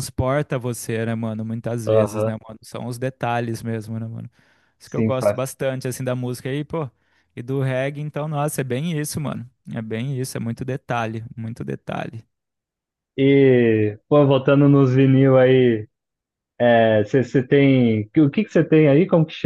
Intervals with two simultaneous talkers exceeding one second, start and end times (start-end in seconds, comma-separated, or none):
none